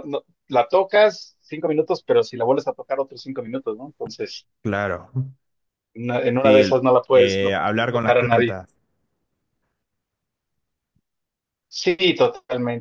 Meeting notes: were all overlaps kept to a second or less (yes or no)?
no